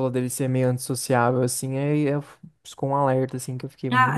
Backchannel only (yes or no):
no